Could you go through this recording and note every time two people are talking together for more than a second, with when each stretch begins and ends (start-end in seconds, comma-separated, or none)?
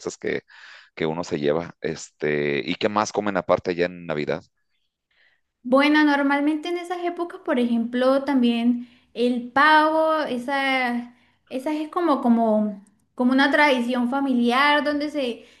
none